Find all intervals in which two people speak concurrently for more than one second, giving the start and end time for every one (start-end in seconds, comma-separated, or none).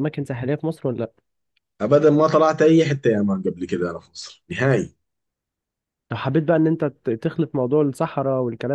none